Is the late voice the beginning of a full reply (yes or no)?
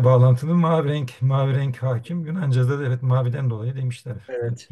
yes